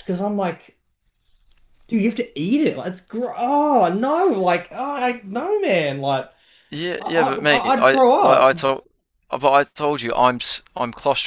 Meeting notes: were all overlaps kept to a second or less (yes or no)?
no